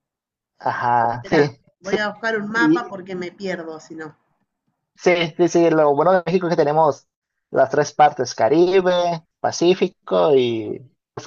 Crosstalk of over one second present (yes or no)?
no